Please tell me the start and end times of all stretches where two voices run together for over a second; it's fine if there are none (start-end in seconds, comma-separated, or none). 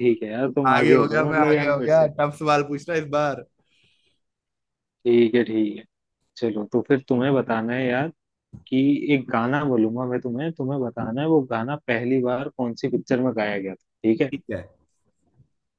0.7-2.1